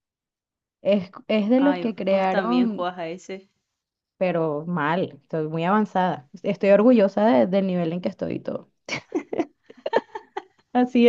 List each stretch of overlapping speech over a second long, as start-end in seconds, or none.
1.6-2.9